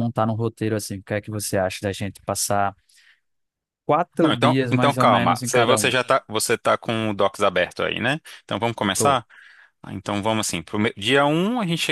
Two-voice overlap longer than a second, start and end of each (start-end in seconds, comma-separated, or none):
4.2-5.9